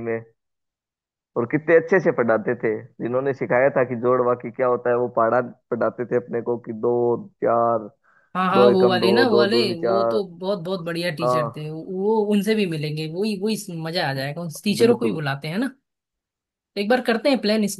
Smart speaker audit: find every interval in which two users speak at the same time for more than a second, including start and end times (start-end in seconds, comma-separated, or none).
8.5-10.2